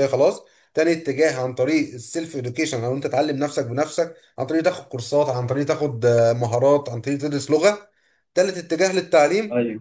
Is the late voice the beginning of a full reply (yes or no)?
no